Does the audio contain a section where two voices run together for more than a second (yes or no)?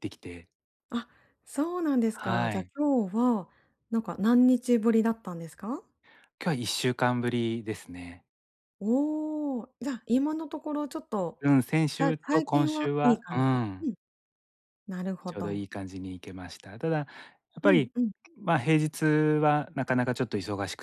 yes